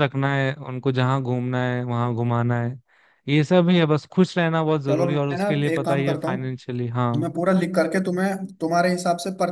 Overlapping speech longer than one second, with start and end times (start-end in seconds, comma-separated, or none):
4.9-6.6